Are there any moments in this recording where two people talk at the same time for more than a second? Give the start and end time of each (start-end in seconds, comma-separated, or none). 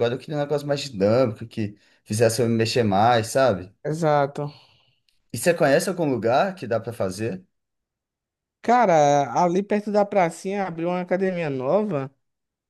none